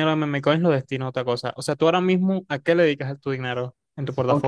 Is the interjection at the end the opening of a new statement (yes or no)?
yes